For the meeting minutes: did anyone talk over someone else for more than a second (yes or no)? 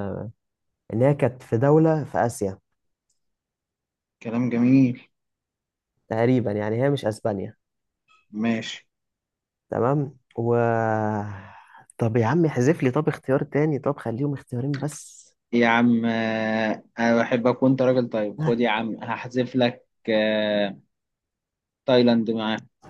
no